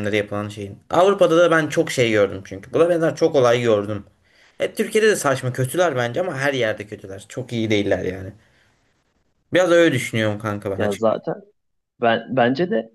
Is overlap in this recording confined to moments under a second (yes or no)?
yes